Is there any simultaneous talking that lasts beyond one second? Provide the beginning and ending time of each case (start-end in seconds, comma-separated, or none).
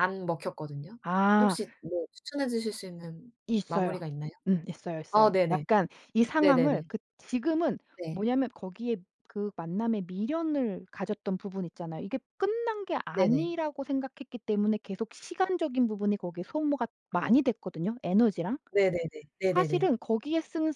none